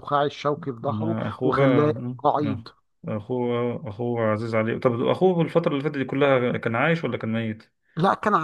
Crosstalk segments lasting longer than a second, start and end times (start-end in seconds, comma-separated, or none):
0.8-2.6